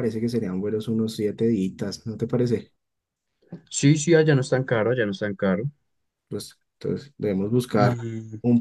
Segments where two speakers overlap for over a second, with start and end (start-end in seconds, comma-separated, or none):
none